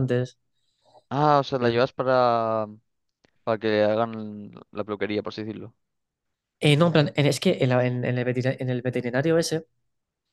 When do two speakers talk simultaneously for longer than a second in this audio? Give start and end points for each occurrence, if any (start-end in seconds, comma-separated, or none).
none